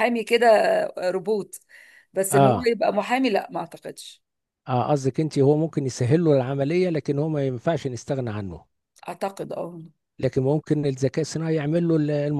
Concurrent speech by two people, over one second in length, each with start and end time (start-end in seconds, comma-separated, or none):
none